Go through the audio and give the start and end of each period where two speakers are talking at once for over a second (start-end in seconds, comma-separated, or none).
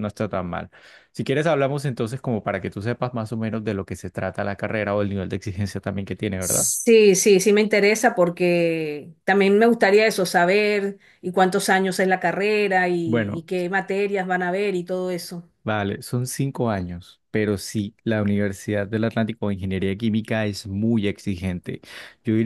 none